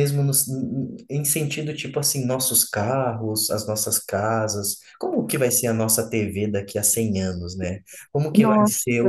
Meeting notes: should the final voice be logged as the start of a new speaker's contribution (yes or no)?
no